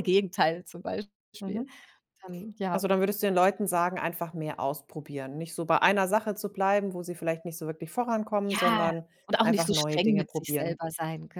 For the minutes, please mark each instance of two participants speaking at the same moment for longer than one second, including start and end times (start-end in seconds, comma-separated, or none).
8.5-10.8